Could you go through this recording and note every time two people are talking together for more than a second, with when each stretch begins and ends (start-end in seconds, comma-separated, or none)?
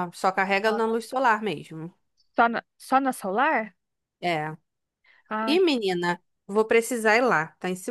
none